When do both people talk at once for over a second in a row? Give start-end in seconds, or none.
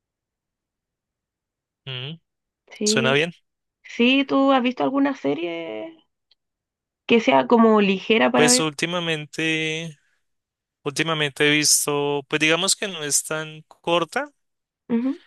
none